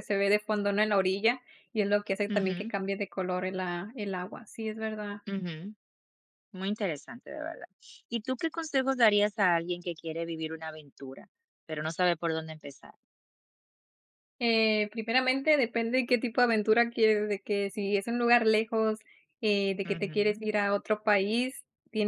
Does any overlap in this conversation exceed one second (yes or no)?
no